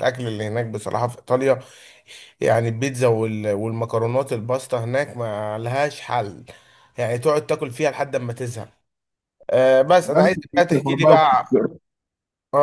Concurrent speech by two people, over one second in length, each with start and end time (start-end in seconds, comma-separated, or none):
10.1-11.4